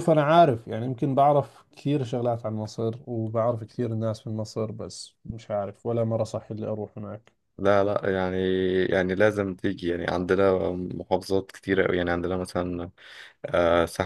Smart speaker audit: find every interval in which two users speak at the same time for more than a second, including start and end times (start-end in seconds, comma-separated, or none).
none